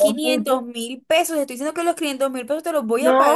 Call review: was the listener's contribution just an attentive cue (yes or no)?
no